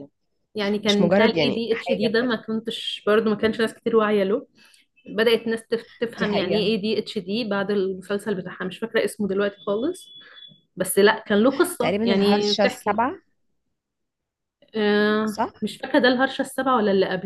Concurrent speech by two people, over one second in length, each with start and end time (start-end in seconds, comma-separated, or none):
0.9-2.4, 11.8-13.1